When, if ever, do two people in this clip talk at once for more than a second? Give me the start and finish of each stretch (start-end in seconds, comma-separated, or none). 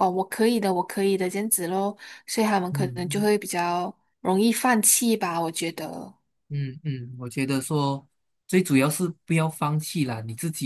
none